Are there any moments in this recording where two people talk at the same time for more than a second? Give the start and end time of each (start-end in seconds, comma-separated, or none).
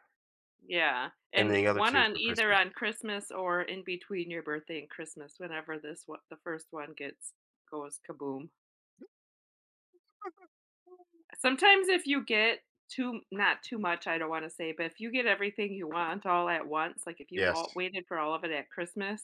1.4-2.6